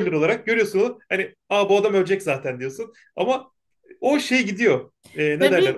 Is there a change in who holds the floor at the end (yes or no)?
yes